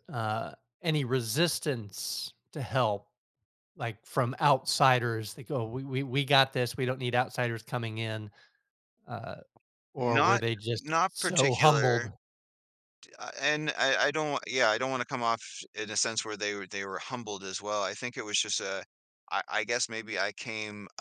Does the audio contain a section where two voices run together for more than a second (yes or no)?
yes